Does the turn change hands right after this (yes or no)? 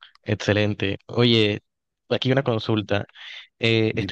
no